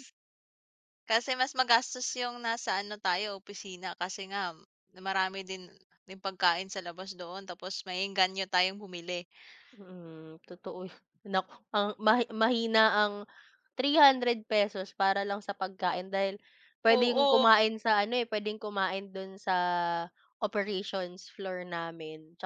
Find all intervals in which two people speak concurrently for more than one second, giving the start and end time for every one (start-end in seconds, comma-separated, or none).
none